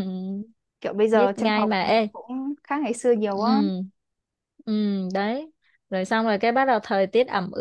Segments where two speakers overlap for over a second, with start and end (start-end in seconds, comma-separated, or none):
none